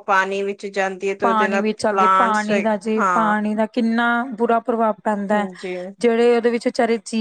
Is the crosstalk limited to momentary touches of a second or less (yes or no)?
no